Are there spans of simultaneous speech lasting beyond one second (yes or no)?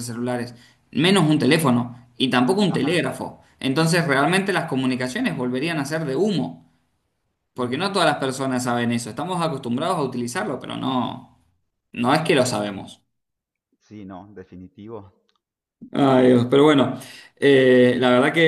no